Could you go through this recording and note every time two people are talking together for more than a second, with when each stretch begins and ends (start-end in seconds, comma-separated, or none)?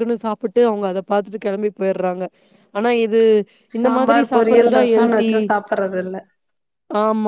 3.8-5.3